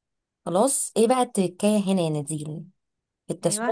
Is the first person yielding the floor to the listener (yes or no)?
no